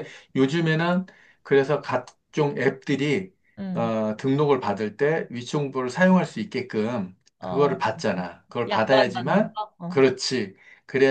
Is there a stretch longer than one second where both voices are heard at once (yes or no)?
yes